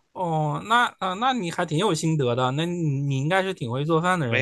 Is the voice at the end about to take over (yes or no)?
yes